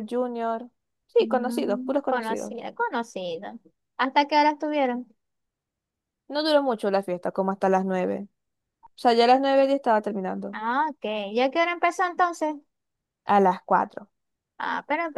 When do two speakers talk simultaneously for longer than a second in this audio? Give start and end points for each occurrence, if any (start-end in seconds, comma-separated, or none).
1.2-2.5